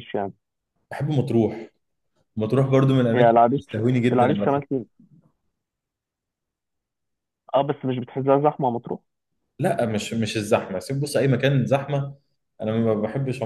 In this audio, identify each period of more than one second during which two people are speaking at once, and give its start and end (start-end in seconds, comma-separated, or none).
3.1-4.8